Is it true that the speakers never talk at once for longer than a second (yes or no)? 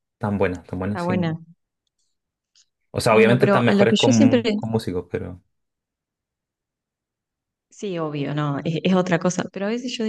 no